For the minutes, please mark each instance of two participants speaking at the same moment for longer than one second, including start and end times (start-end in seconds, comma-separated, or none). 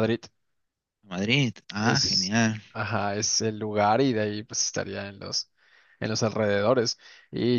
none